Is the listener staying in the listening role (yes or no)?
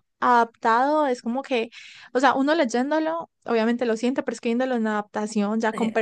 yes